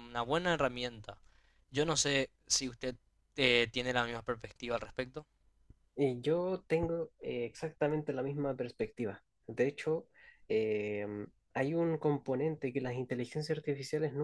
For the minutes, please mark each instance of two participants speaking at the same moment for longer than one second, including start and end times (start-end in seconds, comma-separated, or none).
none